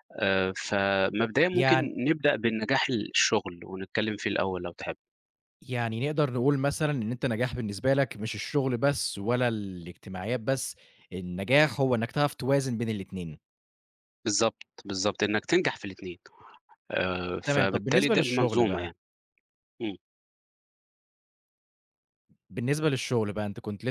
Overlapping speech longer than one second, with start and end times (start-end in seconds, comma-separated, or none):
17.5-18.9